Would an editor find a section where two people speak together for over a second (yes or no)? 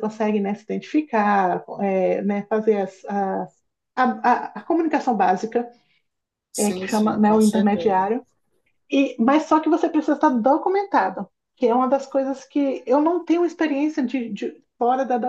yes